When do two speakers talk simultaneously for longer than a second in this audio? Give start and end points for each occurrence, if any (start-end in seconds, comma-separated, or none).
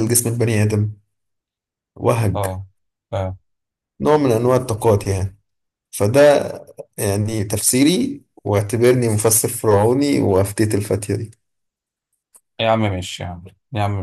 none